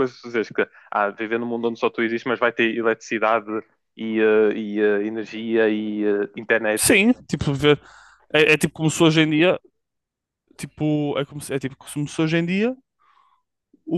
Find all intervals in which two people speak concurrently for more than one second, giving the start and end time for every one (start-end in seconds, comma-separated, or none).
none